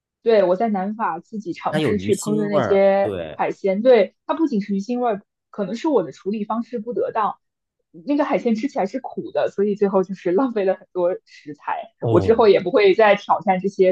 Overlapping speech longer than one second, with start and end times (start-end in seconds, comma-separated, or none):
1.7-3.4